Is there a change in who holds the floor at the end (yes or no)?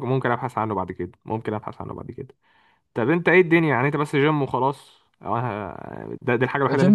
yes